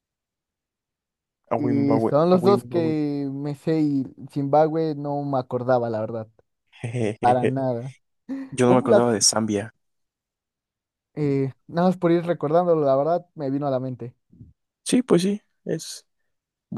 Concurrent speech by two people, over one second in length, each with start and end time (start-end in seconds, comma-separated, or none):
1.6-2.9